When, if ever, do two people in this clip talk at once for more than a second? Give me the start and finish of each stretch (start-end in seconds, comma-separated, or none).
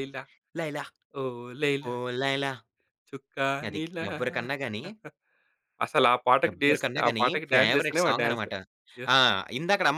6.5-8.5